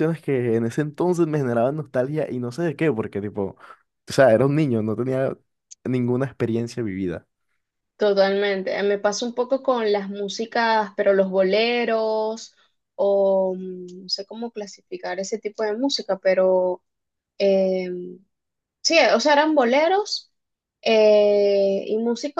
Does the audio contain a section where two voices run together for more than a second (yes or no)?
no